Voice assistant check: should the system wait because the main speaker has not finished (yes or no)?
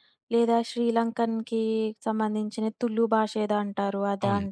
no